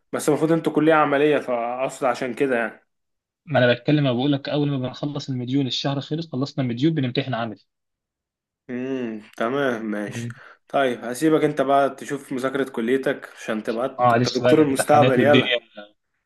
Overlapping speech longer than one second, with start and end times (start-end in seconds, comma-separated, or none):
14.0-15.6